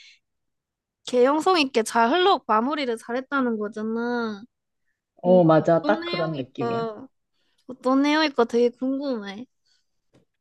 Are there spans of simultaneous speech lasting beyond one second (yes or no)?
yes